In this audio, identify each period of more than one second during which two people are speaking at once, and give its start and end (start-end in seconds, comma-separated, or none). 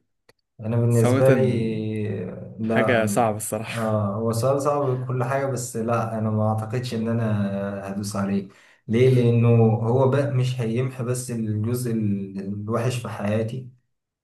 none